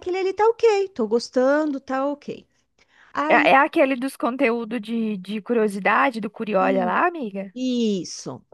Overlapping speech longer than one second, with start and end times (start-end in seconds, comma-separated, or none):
none